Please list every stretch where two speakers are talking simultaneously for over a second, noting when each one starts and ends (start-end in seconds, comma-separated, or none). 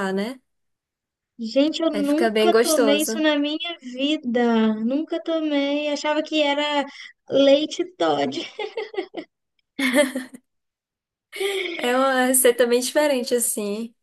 1.9-3.2